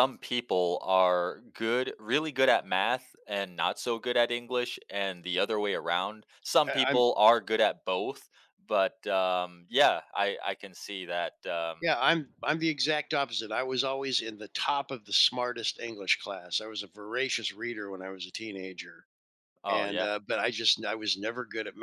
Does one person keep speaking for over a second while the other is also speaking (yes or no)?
no